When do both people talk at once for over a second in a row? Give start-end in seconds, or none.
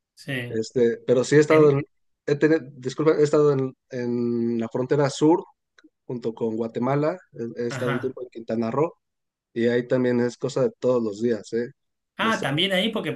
none